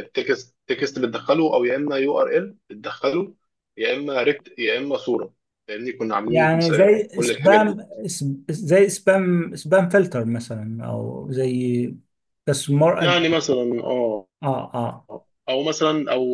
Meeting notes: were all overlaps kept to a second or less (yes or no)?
no